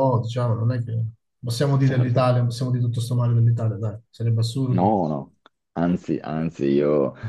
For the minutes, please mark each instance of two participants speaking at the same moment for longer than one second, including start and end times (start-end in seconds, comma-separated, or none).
none